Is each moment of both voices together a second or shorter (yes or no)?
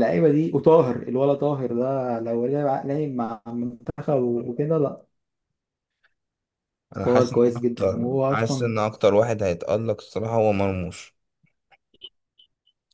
no